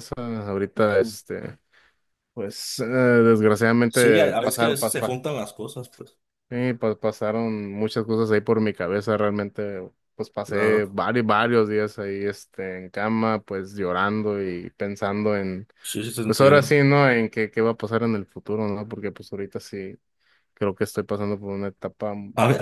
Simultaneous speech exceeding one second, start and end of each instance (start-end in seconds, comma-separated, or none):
3.9-5.2